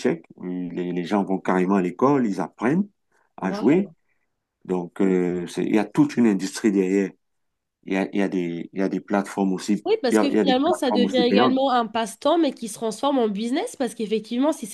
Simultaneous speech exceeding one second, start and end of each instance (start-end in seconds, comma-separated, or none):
9.8-11.6